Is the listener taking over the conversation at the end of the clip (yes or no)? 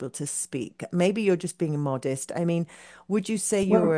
no